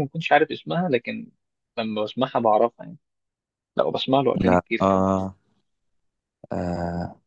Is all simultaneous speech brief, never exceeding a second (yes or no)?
yes